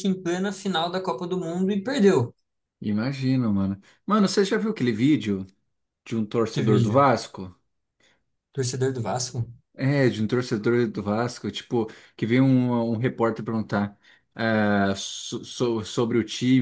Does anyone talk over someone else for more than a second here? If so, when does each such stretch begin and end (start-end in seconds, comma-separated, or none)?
none